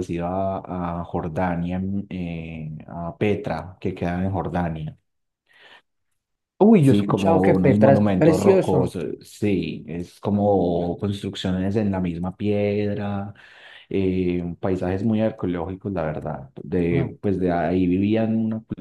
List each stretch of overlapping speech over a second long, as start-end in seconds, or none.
6.8-9.0